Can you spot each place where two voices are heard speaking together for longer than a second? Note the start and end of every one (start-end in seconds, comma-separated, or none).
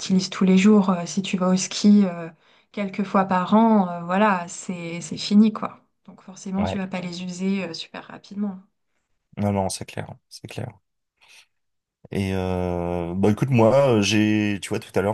none